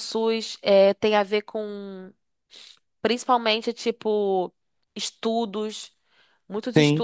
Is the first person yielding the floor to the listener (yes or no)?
no